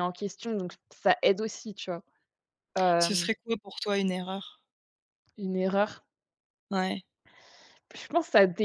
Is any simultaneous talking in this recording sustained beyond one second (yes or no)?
no